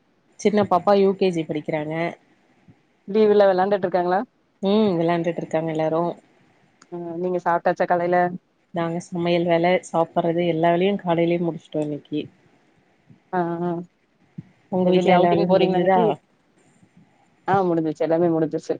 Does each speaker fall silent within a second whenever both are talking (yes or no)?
no